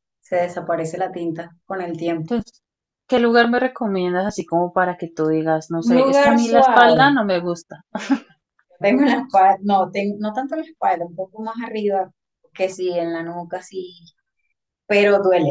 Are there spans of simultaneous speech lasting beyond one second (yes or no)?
yes